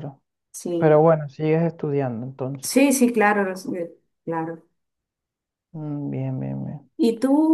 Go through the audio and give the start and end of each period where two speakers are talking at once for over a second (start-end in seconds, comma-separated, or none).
none